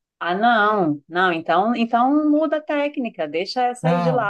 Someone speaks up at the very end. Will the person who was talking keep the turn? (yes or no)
yes